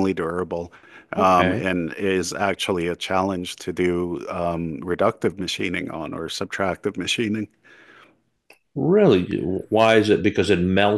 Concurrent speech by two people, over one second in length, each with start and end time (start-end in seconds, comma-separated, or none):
none